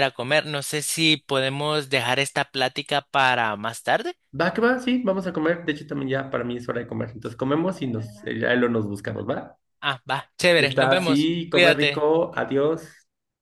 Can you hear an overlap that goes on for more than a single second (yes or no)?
yes